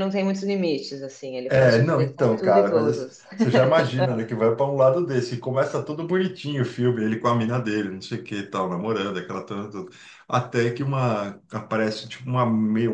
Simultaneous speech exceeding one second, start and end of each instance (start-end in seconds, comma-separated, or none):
1.5-3.2